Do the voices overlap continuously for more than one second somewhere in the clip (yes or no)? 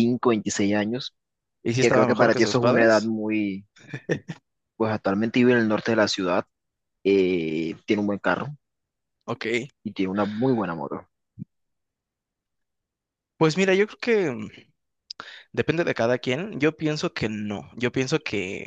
yes